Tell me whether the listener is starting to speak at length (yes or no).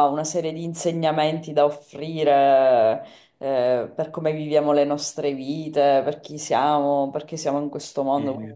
no